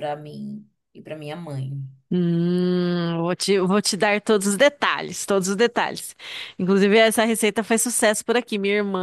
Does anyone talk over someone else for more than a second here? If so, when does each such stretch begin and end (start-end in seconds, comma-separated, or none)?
none